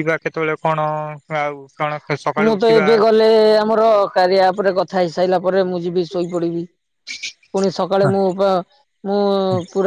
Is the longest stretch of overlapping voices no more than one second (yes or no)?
yes